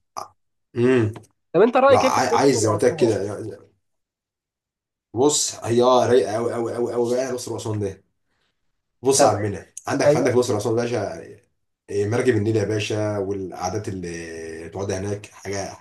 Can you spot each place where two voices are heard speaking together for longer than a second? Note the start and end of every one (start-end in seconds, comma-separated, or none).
1.9-3.2